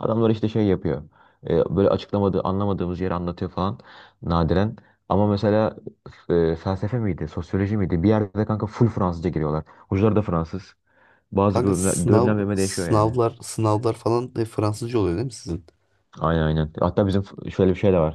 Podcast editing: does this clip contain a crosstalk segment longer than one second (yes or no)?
yes